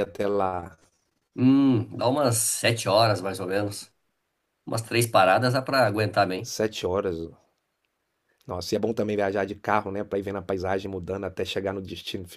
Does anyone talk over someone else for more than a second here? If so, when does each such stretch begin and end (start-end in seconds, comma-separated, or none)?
none